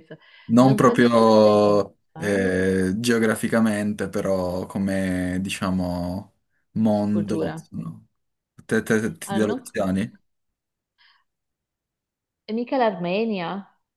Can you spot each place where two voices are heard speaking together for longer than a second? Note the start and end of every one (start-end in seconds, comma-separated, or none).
0.6-2.6